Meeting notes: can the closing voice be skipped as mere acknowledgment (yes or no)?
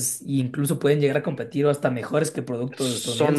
no